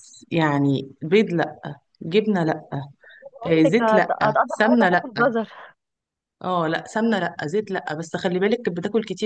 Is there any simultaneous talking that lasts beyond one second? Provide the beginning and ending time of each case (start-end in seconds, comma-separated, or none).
3.5-5.1